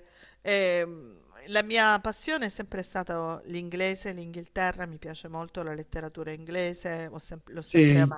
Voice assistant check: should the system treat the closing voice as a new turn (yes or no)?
no